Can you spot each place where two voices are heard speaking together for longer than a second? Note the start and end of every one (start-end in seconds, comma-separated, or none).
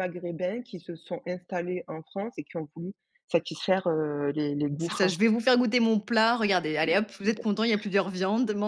none